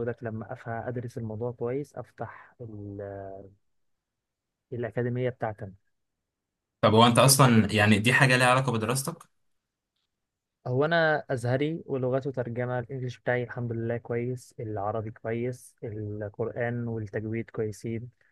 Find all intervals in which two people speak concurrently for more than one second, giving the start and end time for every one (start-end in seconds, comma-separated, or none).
none